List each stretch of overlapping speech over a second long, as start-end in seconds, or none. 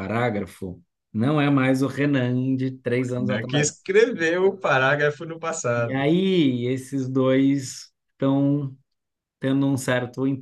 none